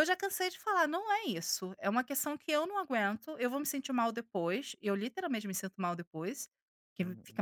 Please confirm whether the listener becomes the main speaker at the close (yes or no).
yes